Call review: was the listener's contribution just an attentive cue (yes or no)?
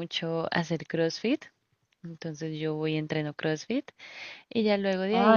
no